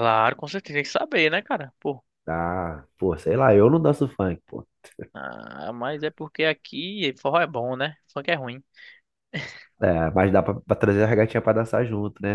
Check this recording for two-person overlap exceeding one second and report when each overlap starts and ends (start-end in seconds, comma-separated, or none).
none